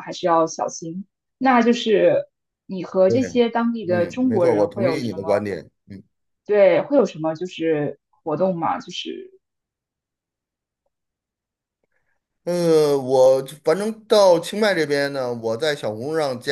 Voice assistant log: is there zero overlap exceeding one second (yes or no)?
no